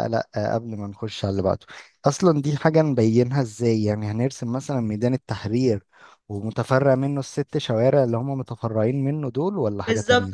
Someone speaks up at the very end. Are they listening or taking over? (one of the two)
taking over